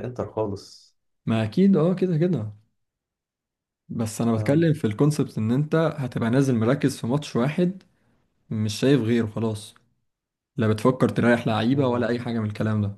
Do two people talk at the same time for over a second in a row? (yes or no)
no